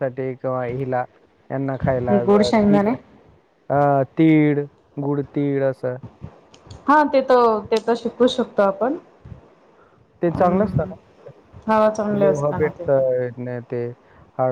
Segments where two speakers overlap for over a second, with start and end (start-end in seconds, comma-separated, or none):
11.7-13.0